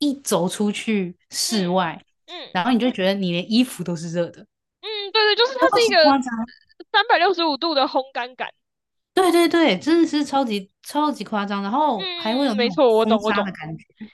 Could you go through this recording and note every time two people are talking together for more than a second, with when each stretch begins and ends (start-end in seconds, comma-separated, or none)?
12.0-13.5